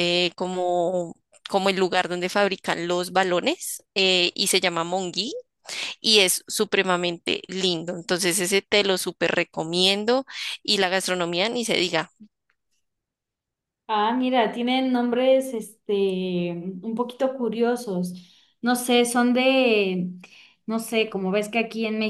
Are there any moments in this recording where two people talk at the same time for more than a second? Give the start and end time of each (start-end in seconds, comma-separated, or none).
none